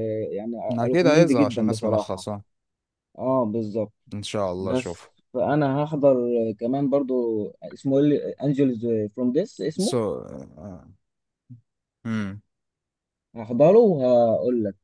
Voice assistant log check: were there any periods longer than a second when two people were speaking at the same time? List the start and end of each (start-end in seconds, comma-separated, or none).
0.7-2.3